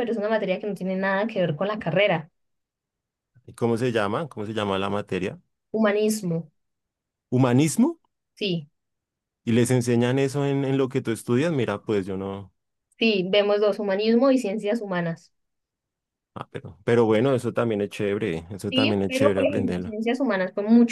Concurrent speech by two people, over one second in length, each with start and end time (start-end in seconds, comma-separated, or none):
18.7-19.9